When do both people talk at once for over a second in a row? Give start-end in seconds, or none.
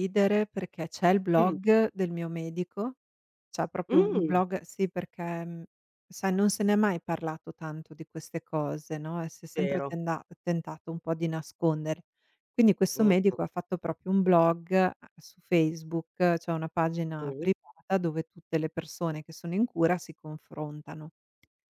none